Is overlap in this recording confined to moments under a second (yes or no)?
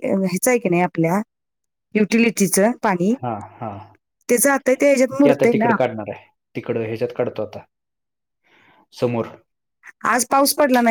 yes